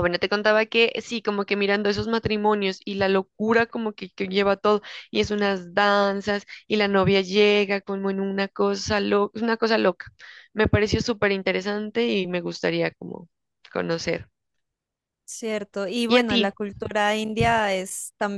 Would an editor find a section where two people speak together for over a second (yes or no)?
no